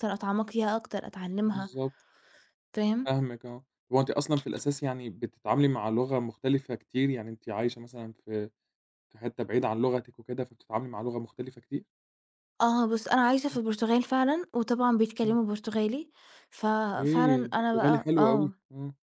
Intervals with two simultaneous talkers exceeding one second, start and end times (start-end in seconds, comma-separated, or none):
17.0-18.5